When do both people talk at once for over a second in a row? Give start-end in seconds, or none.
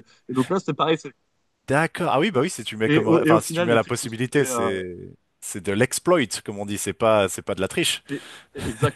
2.9-4.7